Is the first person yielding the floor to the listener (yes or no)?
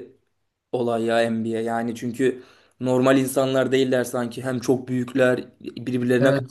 yes